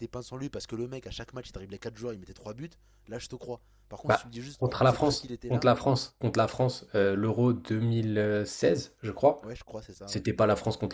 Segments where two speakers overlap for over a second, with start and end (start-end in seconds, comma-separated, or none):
4.1-5.7